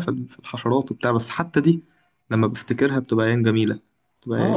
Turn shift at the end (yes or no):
yes